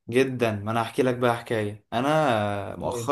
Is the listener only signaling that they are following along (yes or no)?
yes